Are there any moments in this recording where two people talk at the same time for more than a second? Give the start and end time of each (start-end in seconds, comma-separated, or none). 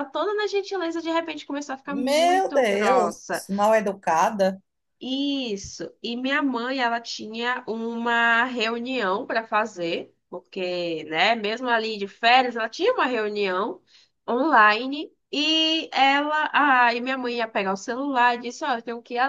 1.9-3.4